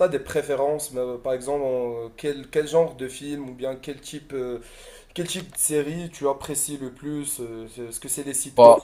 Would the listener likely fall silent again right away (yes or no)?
yes